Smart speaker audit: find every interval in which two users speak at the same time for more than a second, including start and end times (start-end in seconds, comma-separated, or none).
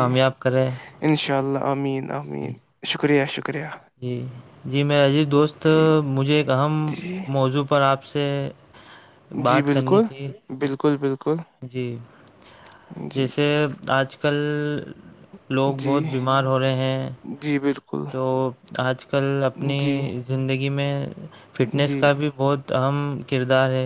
none